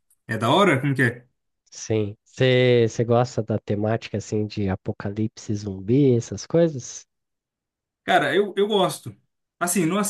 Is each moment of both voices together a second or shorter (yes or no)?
yes